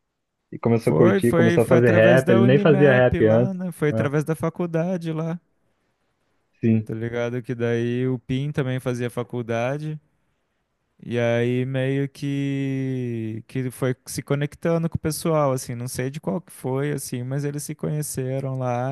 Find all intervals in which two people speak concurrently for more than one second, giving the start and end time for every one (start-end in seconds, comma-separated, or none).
0.8-4.1